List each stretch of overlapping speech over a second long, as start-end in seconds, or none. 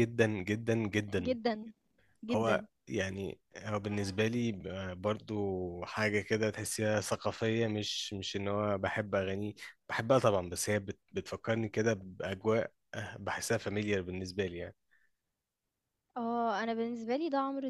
none